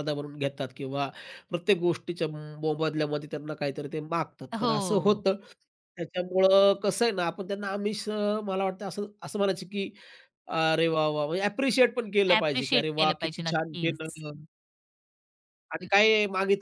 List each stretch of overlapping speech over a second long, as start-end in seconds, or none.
12.4-14.2